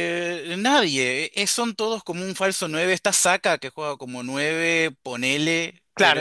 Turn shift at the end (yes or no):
yes